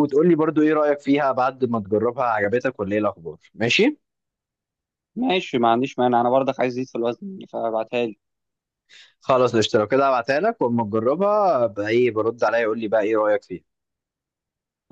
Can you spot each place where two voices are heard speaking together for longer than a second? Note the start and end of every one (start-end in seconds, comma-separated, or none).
none